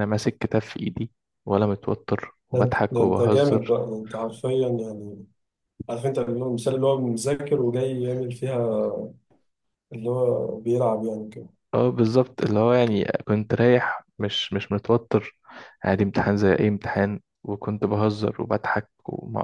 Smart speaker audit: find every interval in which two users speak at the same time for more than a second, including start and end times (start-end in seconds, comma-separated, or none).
2.5-3.8